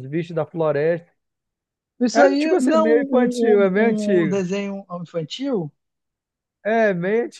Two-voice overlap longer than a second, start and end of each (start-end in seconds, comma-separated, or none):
2.1-4.4